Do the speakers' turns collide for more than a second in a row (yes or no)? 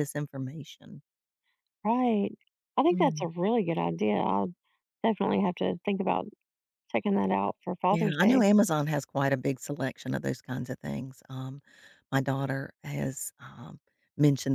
no